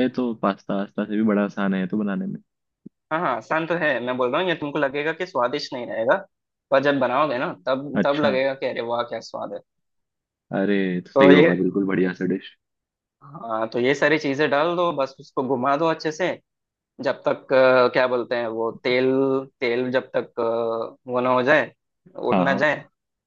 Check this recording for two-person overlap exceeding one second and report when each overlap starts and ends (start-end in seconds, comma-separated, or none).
none